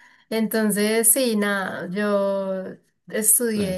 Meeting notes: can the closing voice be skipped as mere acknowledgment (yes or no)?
yes